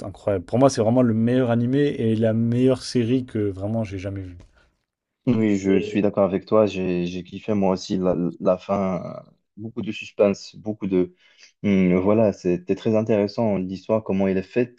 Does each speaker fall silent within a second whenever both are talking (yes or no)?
yes